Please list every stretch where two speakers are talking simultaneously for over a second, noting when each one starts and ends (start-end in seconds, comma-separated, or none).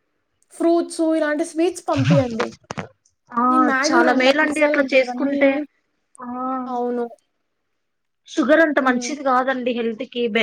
3.9-5.4